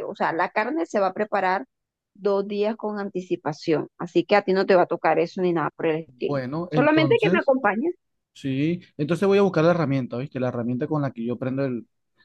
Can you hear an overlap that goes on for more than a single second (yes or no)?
yes